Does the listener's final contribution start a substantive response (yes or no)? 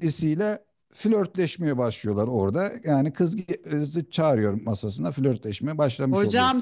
yes